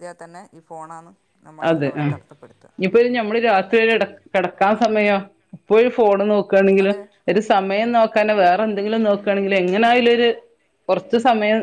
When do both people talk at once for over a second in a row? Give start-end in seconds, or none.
none